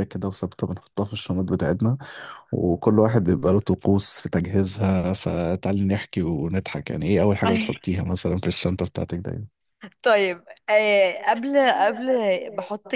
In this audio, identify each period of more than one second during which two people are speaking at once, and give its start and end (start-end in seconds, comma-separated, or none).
none